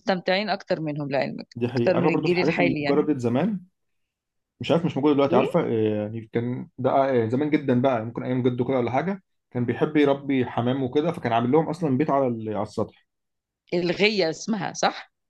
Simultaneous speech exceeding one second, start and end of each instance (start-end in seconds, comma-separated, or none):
1.6-3.1